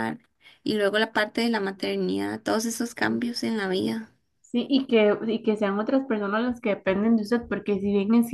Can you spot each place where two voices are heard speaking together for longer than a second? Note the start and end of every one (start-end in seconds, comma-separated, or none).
none